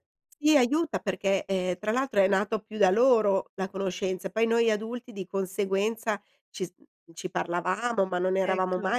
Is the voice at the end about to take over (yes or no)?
no